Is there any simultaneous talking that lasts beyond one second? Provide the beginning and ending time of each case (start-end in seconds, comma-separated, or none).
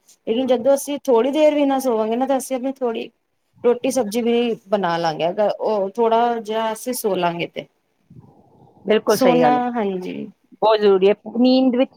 none